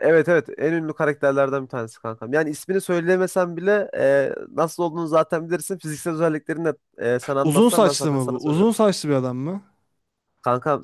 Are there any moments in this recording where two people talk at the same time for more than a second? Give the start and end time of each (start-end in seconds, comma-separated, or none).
7.4-8.7